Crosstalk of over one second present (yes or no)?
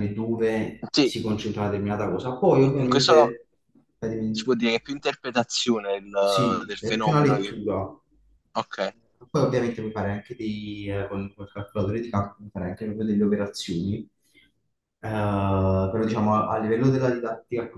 yes